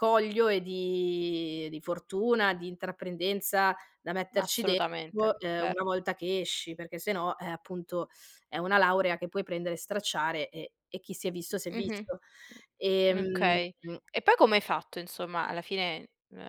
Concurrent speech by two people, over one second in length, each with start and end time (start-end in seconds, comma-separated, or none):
4.3-5.8